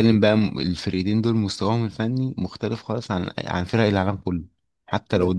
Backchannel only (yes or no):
yes